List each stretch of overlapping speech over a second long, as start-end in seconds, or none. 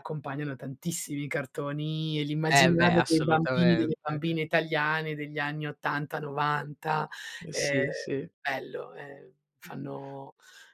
2.5-3.9